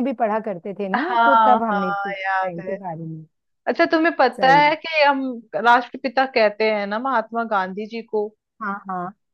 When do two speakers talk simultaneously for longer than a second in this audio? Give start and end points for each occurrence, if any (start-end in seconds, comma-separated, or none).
0.9-2.8